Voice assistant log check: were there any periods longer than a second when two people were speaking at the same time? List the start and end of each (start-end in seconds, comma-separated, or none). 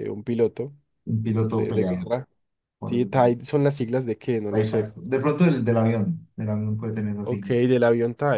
none